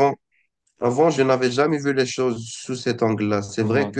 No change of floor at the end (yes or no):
yes